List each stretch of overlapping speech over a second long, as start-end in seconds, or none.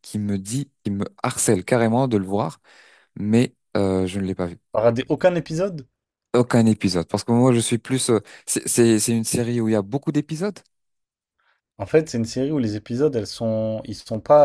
none